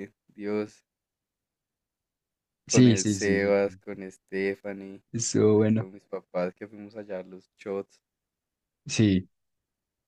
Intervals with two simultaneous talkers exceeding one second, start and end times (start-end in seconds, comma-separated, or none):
2.7-4.0